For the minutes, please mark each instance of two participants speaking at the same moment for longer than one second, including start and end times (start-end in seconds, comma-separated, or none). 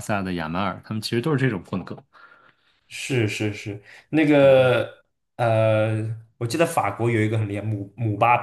none